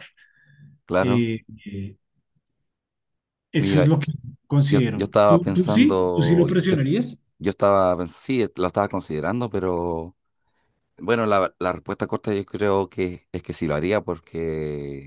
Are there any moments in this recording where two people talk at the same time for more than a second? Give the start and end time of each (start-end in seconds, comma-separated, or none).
4.7-6.8